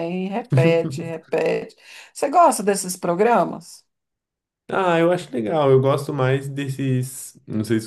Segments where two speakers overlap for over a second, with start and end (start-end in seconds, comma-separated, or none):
none